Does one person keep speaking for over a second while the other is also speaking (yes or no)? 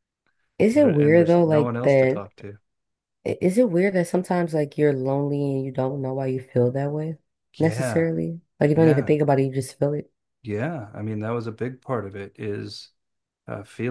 yes